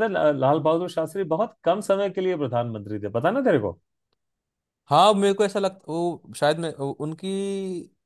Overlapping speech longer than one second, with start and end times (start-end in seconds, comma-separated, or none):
none